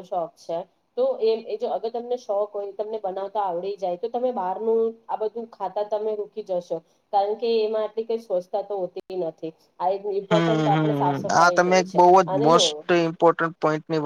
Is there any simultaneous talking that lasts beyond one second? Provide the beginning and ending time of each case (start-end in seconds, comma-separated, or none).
10.3-12.6